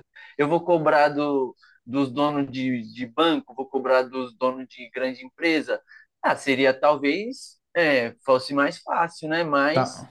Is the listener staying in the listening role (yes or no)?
yes